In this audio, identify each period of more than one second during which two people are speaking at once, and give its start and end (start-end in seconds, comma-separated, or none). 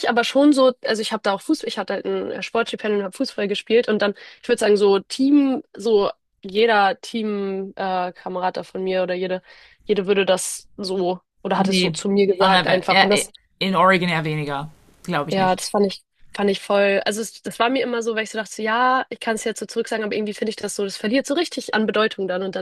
11.5-13.3